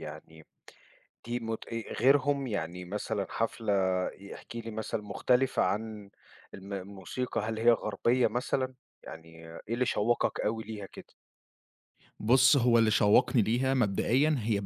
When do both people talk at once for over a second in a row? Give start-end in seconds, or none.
none